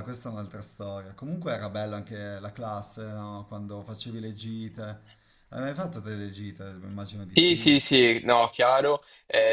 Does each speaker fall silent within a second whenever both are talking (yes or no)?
yes